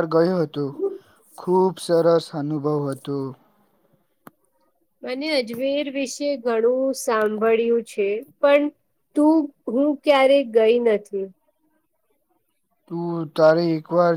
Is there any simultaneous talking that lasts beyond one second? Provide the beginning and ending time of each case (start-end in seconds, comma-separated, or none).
none